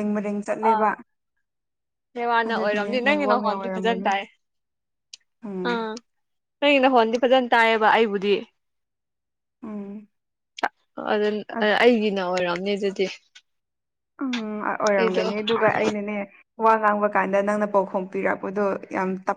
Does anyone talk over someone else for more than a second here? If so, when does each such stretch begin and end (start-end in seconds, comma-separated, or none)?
2.5-4.1